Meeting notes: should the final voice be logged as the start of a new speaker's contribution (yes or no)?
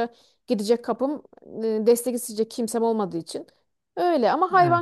no